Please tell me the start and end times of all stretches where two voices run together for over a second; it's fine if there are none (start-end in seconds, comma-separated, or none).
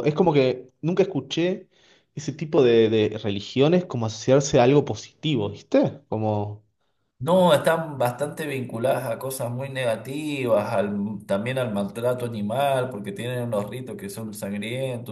none